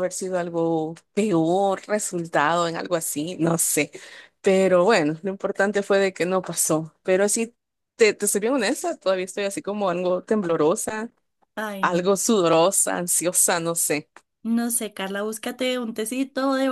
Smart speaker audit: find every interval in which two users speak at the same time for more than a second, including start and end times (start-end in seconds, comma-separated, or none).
none